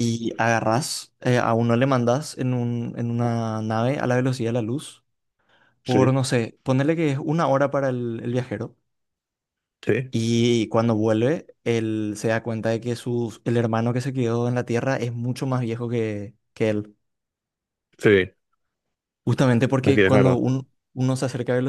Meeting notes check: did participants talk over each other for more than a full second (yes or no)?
no